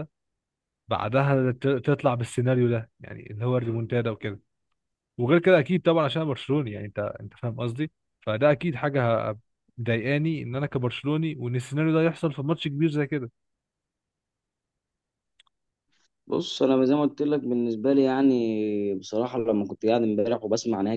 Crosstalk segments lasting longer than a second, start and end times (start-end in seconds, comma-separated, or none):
none